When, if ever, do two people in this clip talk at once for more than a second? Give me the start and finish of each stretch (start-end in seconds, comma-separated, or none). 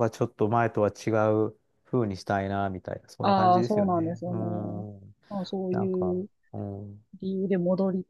3.2-4.8